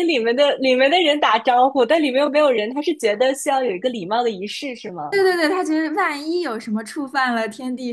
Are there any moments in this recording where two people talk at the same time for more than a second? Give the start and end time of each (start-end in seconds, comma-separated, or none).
none